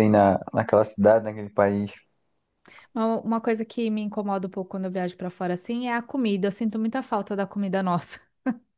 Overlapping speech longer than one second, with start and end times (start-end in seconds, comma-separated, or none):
none